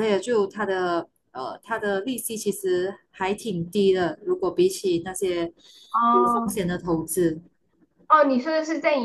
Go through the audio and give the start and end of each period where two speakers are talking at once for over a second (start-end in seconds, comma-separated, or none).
none